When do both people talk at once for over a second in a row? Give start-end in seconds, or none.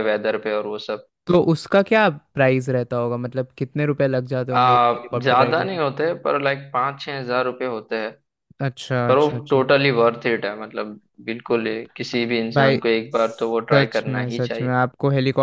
12.5-14.4